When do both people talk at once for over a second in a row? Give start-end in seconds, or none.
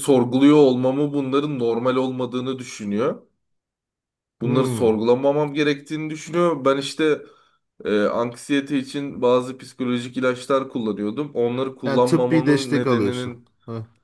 11.8-13.5